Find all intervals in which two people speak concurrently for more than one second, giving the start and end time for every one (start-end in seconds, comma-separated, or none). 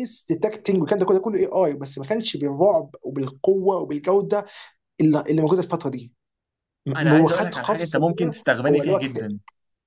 7.0-9.4